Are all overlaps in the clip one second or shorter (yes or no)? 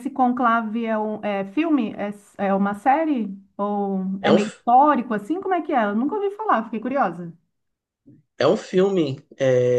yes